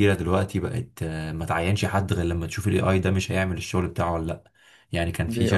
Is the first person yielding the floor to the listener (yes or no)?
no